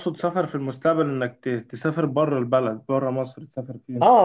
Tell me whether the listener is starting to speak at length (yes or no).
yes